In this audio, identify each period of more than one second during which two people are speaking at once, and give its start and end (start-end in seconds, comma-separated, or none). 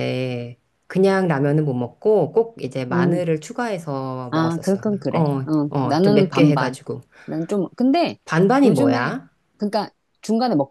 4.3-6.8